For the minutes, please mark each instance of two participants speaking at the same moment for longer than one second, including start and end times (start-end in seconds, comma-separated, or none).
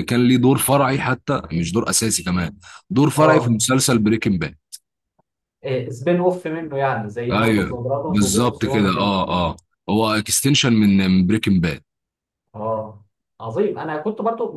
7.3-9.1